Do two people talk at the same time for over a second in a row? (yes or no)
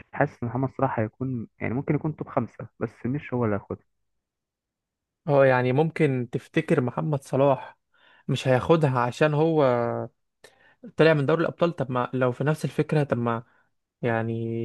no